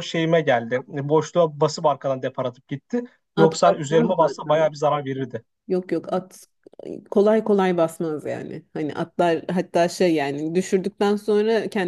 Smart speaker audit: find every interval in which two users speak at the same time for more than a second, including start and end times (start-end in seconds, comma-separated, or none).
3.4-4.7